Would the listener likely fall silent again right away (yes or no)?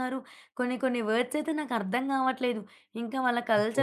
yes